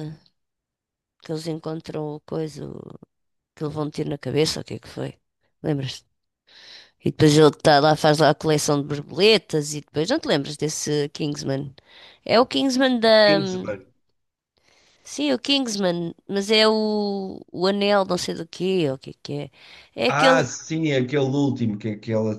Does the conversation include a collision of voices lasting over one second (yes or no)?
no